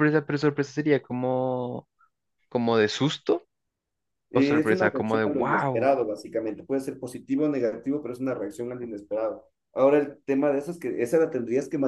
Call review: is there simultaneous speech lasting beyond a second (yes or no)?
yes